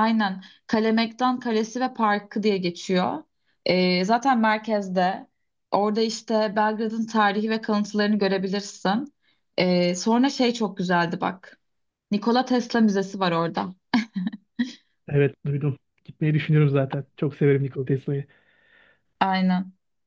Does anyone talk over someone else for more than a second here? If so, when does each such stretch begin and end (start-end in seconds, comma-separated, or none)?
none